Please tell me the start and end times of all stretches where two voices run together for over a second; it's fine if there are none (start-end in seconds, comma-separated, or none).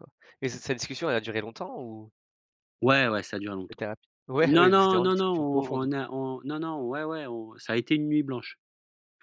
4.5-6.0